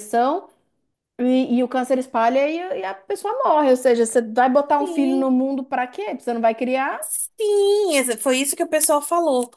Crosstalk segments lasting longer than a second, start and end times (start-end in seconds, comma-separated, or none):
none